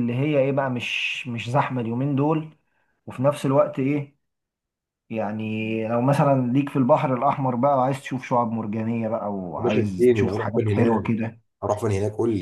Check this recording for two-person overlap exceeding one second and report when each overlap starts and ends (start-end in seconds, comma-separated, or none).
9.6-11.1